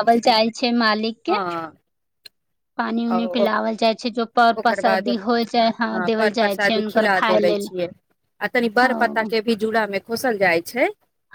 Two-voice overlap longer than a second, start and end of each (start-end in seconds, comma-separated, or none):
4.6-7.7